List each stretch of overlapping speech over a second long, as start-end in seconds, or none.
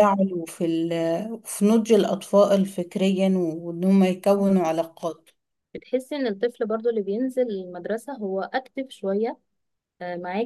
none